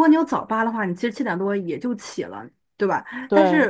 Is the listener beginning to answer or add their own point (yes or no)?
no